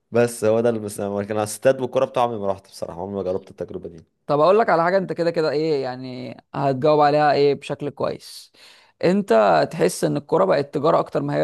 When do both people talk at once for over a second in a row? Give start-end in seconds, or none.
none